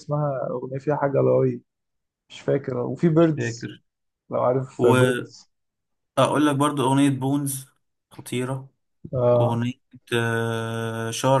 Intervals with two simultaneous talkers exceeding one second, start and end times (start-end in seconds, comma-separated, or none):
none